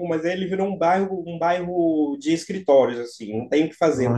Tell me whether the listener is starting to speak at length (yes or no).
no